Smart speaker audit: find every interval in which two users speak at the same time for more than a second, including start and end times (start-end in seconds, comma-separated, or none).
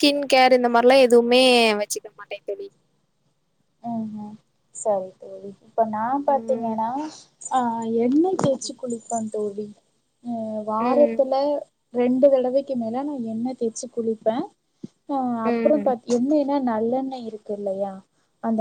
none